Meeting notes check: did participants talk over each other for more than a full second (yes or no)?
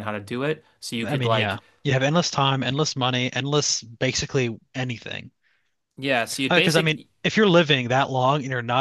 no